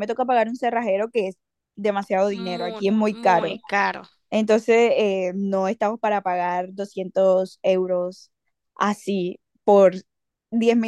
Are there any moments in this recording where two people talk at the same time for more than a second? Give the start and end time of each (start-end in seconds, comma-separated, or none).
2.3-3.6